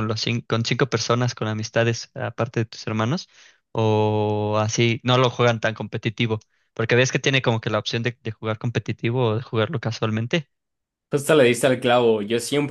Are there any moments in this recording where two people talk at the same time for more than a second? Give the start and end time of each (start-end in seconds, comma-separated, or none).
none